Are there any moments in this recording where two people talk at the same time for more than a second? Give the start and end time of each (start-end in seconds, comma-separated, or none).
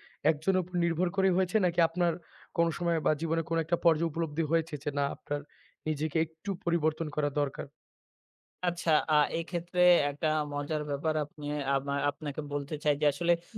none